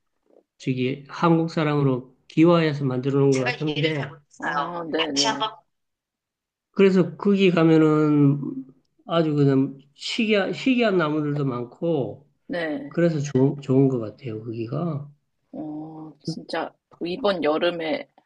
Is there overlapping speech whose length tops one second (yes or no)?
no